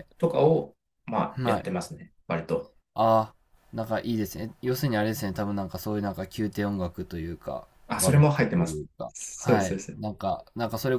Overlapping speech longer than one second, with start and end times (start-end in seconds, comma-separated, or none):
7.9-10.0